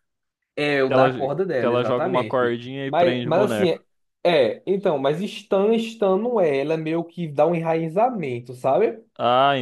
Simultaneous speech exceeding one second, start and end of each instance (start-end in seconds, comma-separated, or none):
0.9-3.8